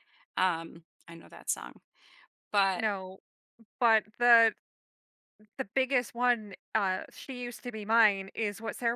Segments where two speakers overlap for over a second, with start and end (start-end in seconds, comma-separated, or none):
none